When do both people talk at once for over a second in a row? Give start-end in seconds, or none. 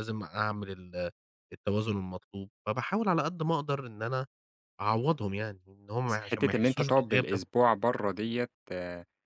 6.1-7.4